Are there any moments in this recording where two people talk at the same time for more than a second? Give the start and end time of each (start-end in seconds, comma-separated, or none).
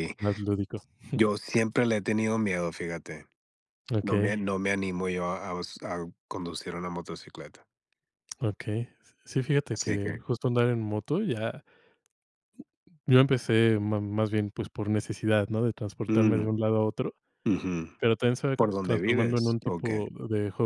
18.6-20.1